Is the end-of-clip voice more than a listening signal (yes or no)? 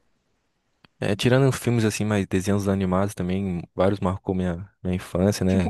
yes